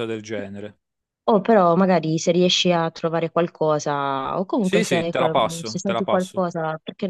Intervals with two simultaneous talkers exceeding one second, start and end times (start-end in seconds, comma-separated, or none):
4.6-6.4